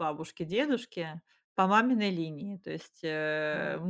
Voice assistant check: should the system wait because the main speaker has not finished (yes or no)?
yes